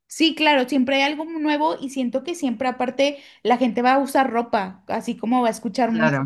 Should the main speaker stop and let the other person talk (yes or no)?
no